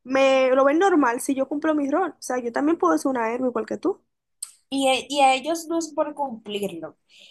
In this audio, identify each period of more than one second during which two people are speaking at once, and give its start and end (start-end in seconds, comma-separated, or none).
none